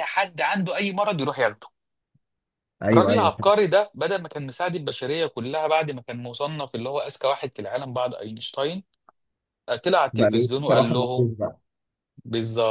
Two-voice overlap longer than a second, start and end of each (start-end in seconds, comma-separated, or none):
10.1-11.3